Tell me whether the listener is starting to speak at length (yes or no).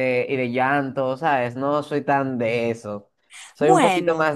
no